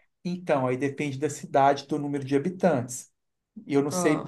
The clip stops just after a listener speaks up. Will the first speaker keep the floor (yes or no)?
yes